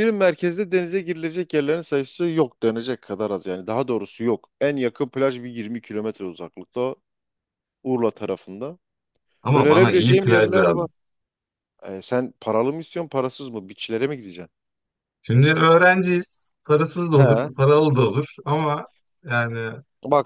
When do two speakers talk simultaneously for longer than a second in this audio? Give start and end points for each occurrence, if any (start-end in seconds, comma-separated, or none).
9.5-10.9